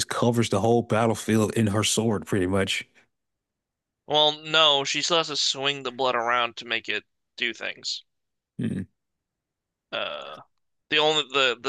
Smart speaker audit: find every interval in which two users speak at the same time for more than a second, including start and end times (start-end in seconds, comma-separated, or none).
none